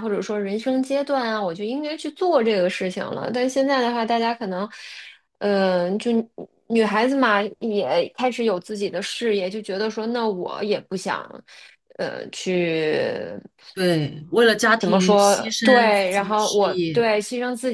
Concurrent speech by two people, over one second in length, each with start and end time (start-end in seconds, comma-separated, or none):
15.6-17.0